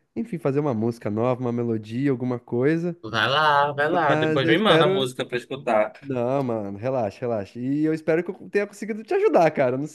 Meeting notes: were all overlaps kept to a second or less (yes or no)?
no